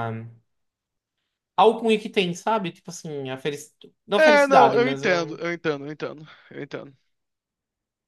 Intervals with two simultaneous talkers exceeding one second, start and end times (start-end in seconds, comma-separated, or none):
4.2-5.4